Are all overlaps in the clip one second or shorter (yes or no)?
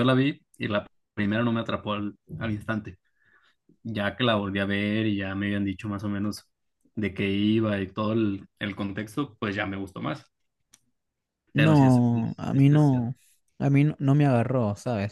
no